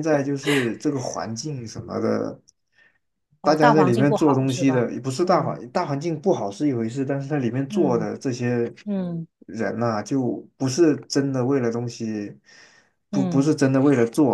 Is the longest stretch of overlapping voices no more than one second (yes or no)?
no